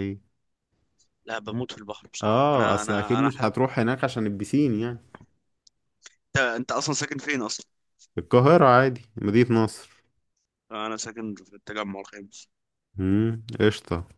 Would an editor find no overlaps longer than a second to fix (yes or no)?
no